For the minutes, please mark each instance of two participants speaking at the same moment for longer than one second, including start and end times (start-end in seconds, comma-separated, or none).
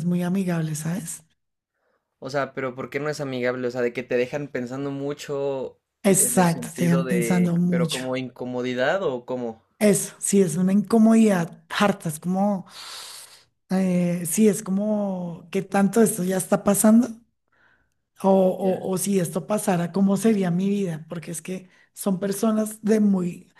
6.2-8.0